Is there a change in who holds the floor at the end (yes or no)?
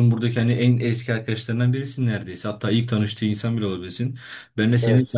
no